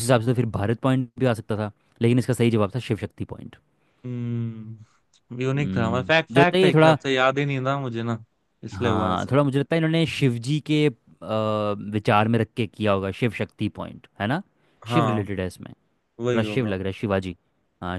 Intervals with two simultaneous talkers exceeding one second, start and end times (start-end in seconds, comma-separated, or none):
5.6-7.0